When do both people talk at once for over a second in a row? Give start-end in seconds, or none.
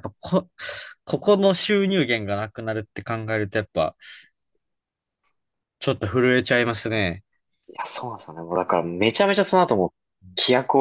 none